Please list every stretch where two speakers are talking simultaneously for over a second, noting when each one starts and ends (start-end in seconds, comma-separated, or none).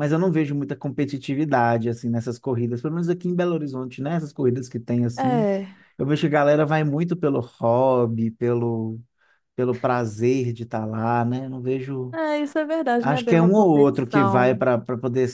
13.0-14.7